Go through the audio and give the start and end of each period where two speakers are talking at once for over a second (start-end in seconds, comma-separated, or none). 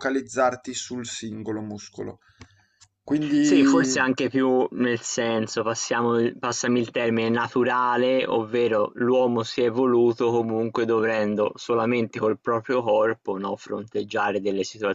none